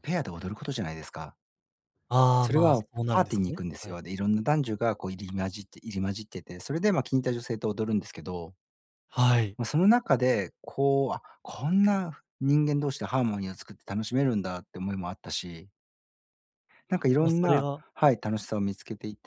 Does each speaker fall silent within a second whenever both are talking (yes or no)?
no